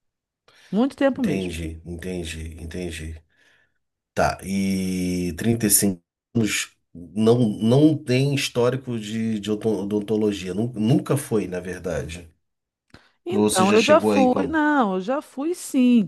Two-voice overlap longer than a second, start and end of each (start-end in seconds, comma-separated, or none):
13.3-14.6